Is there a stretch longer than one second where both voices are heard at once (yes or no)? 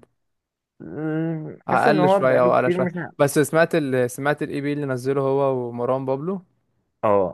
yes